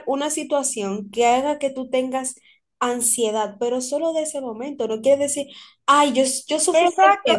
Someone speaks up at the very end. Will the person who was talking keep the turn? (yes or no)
no